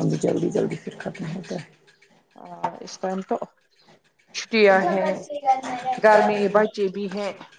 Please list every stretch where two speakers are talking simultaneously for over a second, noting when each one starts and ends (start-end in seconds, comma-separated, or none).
none